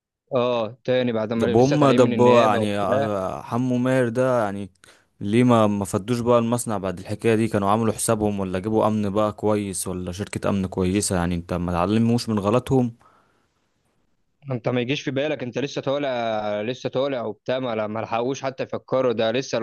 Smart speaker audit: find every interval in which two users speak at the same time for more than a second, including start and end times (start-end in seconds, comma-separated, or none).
1.4-3.1